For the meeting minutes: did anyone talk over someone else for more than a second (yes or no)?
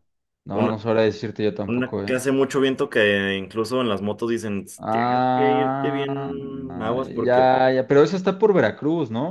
yes